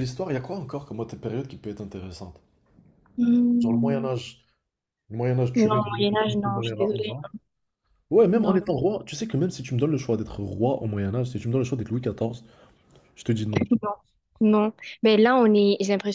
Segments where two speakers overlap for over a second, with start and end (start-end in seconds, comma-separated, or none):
5.5-7.1